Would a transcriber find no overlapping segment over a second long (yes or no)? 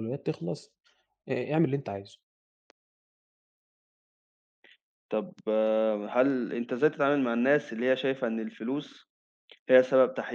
yes